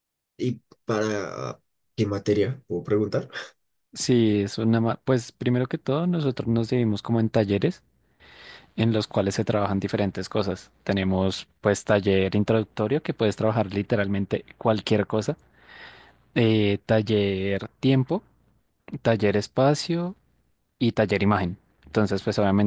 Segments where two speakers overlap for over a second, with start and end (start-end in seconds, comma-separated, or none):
none